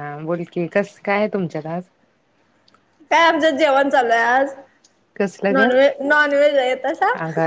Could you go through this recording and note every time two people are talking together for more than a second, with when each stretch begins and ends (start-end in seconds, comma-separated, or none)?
none